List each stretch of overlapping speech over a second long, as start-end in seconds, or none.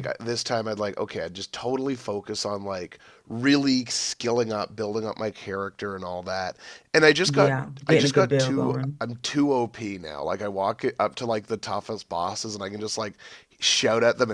7.2-9.0